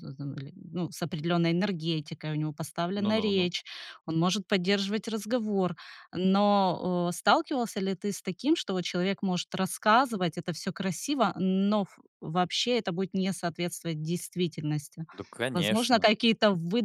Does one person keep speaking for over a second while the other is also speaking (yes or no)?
no